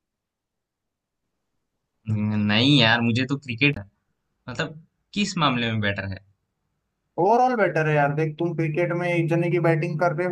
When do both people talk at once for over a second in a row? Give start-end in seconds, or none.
none